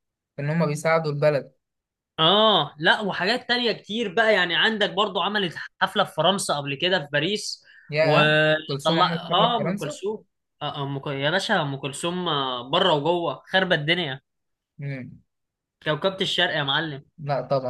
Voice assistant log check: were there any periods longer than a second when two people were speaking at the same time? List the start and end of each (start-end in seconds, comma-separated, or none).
8.0-10.0